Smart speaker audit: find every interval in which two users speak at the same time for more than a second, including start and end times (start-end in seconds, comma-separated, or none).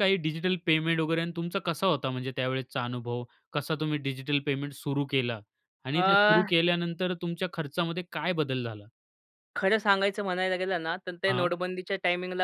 none